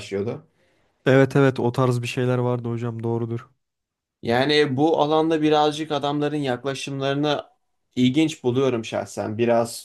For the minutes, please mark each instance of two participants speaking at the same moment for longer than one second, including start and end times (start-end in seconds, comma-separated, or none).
none